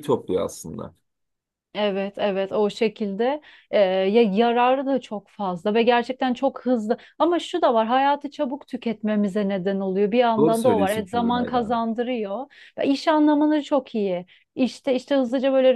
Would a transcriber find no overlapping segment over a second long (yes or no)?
no